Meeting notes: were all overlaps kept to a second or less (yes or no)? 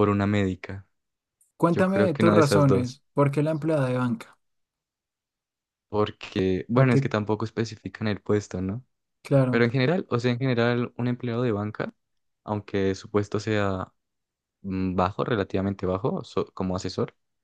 no